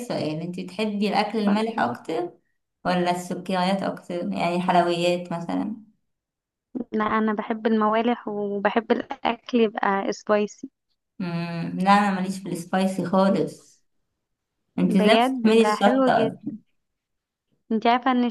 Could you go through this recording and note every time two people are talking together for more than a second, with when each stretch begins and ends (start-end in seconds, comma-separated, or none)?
15.0-16.5